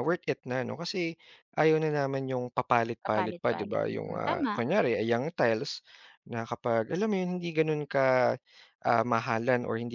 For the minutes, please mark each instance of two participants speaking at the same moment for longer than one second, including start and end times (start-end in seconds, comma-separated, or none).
3.0-4.5